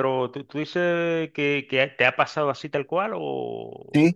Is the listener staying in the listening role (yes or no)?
no